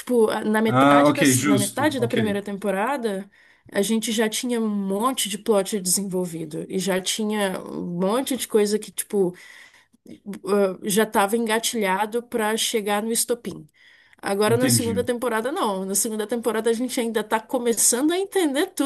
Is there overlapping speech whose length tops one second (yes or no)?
yes